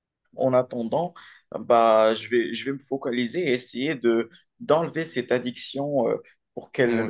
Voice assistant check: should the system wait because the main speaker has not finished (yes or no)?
yes